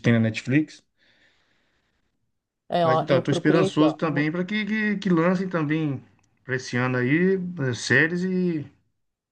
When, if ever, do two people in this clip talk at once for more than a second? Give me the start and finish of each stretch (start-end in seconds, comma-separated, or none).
2.8-4.3